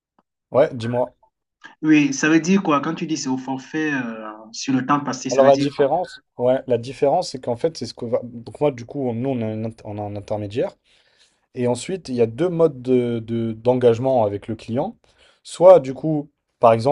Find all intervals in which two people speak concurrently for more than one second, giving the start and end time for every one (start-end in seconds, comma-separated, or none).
none